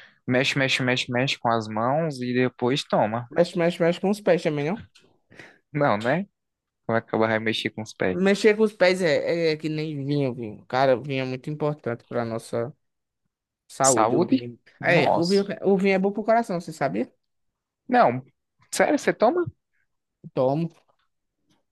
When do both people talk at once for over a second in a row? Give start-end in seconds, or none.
13.8-15.4